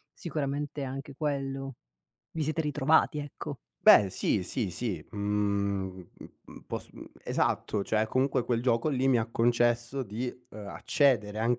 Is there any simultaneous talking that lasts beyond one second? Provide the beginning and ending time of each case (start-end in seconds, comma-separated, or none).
none